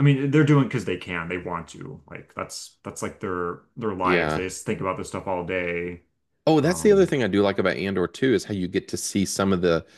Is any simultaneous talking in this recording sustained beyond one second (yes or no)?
no